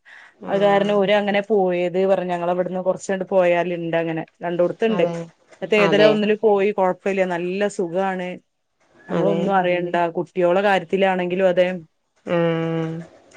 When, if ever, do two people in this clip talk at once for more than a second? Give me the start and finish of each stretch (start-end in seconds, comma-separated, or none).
none